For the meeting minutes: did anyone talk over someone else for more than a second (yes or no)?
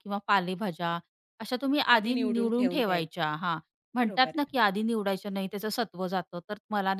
yes